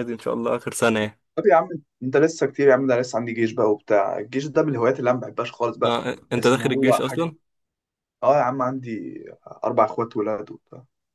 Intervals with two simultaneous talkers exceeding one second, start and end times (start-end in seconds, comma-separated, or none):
5.8-7.3